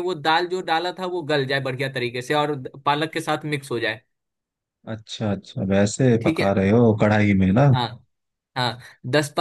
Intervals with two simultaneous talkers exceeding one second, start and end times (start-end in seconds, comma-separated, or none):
none